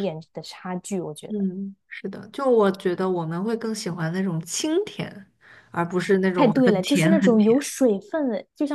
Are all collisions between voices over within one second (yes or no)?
no